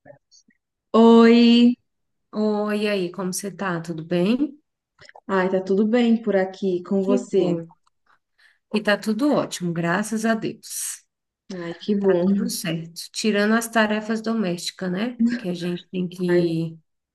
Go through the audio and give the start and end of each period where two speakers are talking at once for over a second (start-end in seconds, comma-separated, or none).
none